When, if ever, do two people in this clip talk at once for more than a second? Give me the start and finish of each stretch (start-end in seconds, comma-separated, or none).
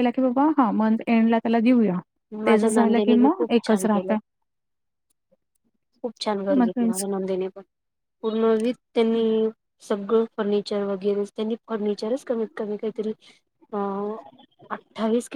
2.5-4.2